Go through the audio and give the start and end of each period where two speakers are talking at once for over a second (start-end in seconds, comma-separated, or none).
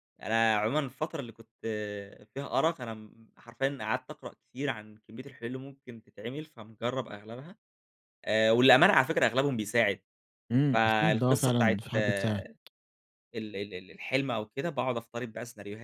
10.7-12.3